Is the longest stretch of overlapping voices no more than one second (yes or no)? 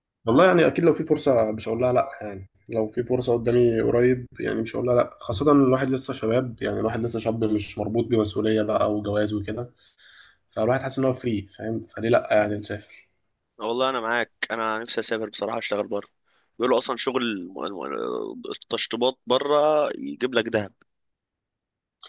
yes